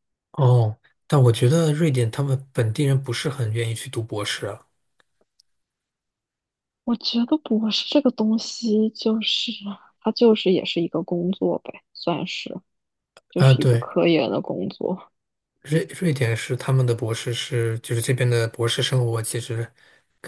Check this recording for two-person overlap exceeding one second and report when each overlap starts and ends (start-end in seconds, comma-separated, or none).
none